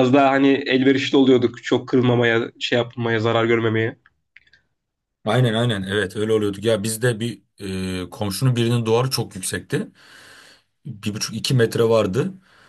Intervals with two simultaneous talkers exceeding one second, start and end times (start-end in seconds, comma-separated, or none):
none